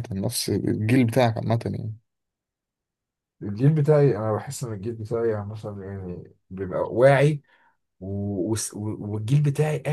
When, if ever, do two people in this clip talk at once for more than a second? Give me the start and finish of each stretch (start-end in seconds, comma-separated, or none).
none